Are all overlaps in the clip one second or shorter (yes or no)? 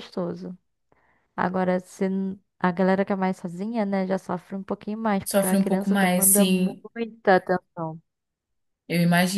no